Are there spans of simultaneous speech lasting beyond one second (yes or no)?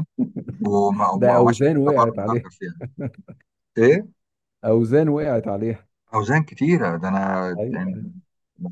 yes